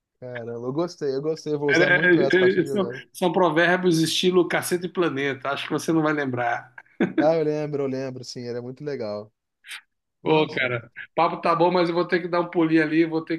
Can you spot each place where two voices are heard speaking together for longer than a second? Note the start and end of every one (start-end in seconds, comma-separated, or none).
1.7-3.0